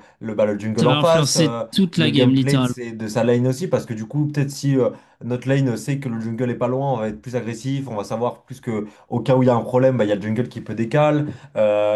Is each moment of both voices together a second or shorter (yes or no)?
no